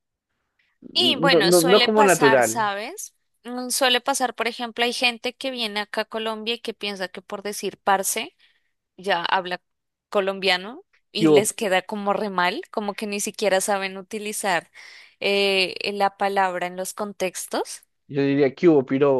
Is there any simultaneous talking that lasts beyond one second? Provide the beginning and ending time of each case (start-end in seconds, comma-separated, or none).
0.9-2.7